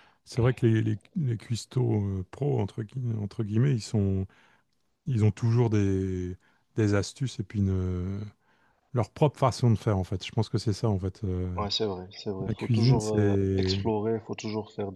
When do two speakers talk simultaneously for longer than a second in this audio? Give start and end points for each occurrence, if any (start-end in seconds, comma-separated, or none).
12.4-13.8